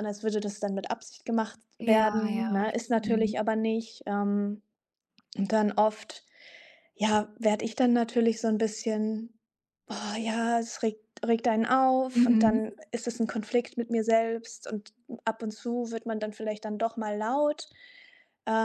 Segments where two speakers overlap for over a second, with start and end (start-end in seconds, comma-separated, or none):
1.8-3.3